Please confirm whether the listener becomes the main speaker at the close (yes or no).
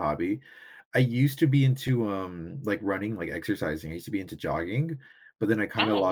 no